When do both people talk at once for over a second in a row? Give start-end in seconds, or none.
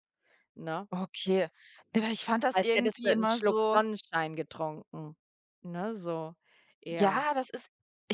2.5-3.8